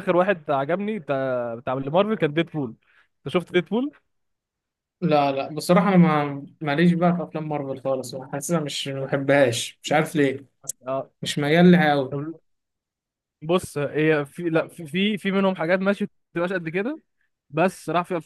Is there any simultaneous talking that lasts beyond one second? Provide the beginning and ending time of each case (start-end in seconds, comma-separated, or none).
none